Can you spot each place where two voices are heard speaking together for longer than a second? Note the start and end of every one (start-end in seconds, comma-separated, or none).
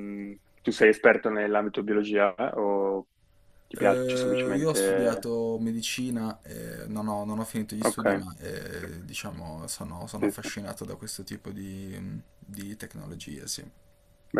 3.7-5.3